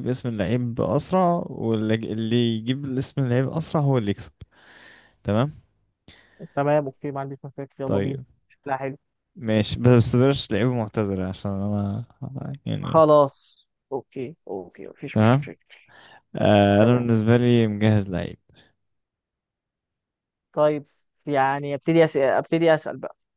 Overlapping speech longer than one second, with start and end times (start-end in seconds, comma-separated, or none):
none